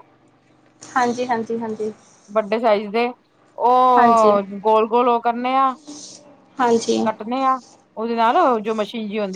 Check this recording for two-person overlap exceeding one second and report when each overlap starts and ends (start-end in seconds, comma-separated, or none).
none